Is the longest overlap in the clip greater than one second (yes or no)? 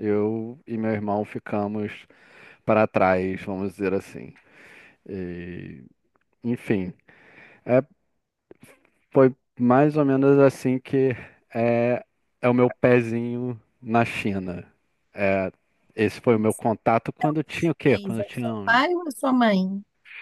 yes